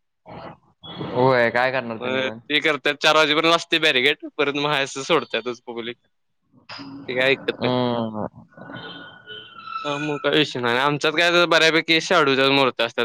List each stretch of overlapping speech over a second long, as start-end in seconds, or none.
1.1-2.4